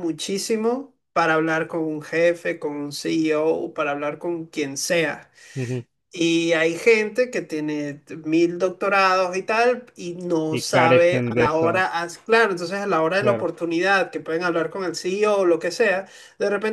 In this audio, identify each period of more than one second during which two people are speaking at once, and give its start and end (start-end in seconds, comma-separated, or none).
10.5-11.9